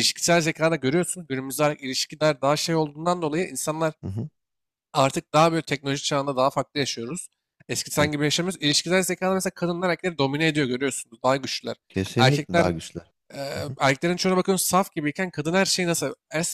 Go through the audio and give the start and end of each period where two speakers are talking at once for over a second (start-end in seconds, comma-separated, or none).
none